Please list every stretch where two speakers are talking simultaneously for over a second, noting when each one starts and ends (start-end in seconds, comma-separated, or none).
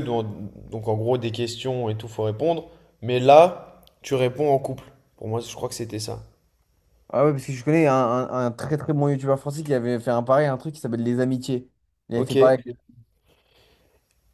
none